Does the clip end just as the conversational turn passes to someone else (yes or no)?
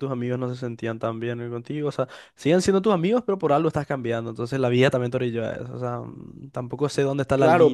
yes